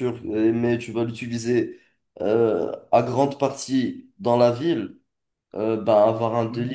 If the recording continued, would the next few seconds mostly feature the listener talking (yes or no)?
no